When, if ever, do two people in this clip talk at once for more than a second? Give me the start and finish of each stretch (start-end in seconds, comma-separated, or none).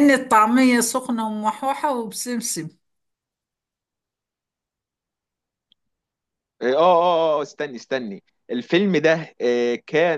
none